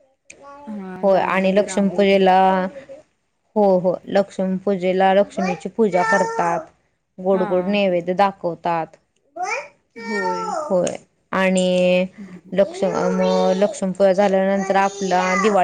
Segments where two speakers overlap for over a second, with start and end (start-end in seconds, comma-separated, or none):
1.0-2.2